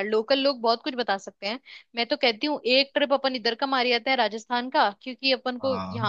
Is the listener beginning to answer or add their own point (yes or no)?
no